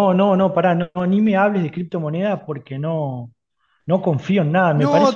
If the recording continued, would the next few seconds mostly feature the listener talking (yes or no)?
yes